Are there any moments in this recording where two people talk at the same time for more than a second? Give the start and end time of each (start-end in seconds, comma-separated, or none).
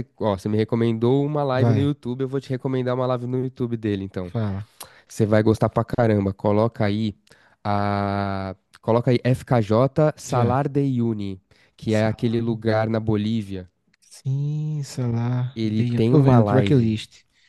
15.5-17.0